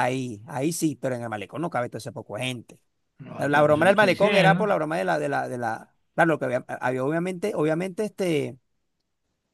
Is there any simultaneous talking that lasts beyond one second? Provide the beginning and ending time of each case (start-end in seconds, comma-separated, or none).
3.4-4.7